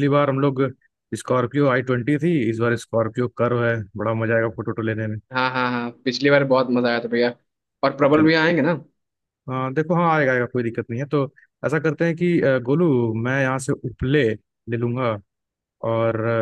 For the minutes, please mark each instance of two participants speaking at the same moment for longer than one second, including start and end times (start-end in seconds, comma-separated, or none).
none